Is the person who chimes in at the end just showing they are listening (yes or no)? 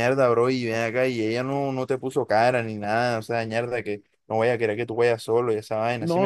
no